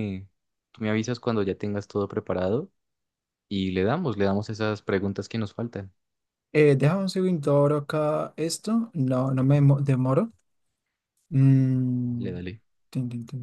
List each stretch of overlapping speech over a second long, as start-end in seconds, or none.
none